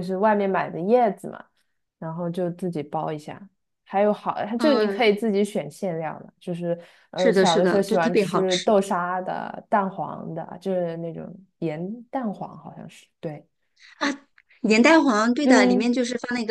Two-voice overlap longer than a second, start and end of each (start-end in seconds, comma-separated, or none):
7.2-8.7